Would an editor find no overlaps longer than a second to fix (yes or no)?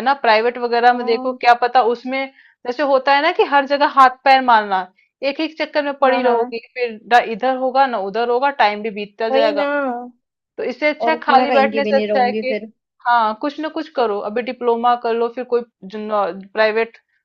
no